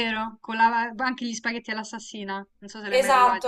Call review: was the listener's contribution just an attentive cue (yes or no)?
no